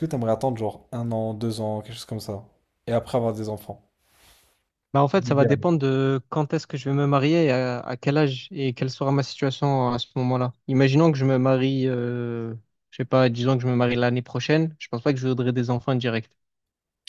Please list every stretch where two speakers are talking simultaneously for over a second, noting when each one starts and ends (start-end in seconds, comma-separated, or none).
none